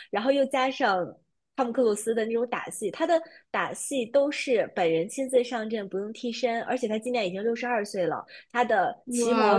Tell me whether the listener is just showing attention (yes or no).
yes